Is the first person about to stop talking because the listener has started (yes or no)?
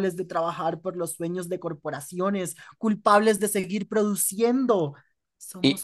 no